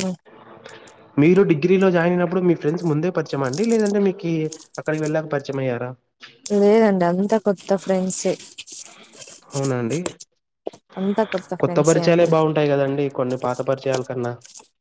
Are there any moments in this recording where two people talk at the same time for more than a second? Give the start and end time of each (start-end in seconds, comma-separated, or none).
none